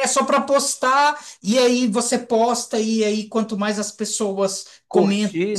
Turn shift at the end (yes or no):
no